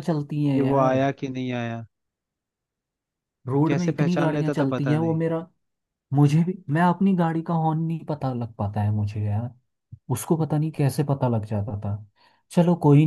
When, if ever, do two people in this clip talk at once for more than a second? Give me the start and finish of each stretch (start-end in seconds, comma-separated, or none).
3.7-5.2